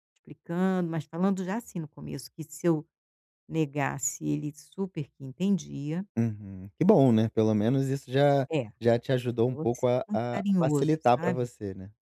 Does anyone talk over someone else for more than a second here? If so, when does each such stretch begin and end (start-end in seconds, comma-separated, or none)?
9.3-11.5